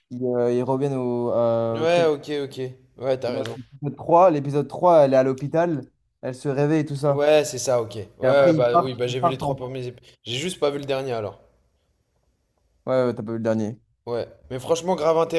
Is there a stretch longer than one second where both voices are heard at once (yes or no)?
yes